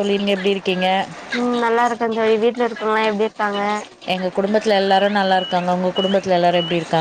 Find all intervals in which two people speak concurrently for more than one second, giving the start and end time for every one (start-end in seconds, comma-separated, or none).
none